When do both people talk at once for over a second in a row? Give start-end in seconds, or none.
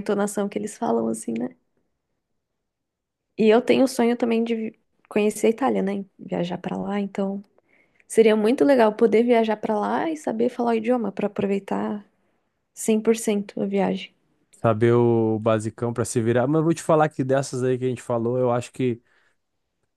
none